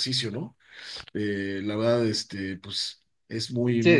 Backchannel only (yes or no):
no